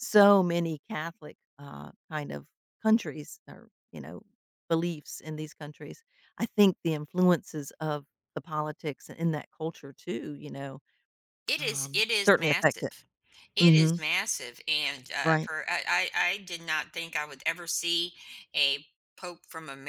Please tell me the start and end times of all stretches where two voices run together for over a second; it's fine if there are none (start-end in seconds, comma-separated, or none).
11.6-12.9